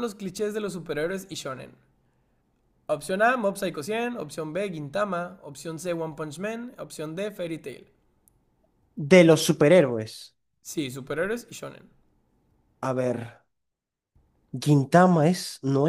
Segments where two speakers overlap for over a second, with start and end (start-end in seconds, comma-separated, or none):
none